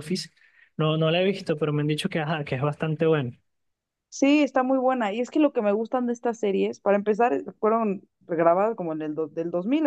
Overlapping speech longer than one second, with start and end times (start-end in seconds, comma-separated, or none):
none